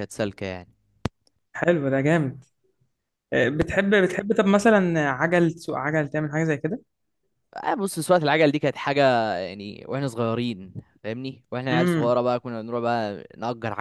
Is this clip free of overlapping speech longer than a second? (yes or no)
yes